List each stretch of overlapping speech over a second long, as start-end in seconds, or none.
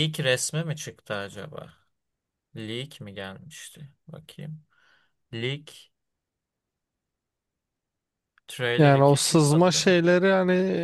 8.8-10.0